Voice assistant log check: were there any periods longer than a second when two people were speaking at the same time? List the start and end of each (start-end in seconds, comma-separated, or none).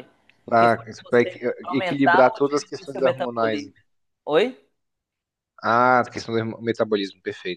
0.6-3.6